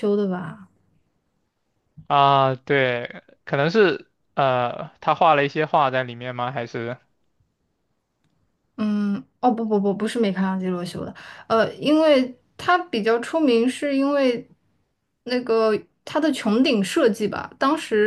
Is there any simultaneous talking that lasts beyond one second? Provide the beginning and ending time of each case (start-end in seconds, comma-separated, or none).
none